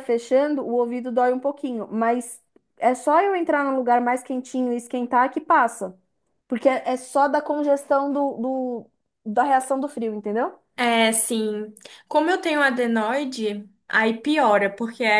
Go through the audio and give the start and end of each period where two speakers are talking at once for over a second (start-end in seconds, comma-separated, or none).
none